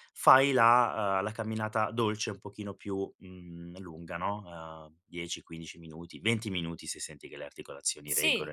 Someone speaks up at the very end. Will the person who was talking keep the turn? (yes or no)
no